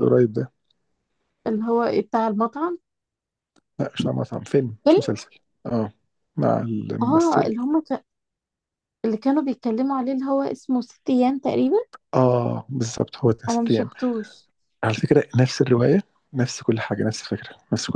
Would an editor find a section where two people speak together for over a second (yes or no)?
no